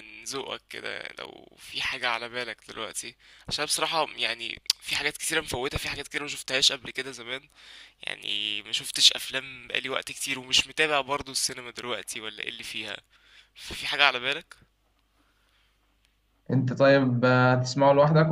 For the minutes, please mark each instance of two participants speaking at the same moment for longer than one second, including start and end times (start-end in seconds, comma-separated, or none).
none